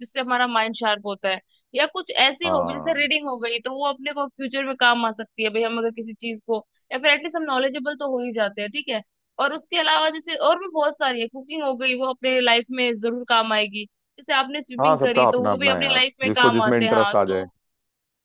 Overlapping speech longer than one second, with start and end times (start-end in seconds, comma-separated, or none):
14.8-17.4